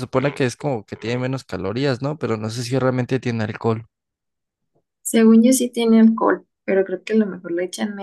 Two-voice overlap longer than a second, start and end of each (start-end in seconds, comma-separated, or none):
none